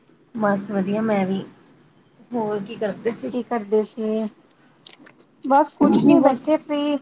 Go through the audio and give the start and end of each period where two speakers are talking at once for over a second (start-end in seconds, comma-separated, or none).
none